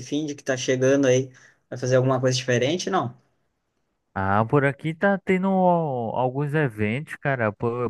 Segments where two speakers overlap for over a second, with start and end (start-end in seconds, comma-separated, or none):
none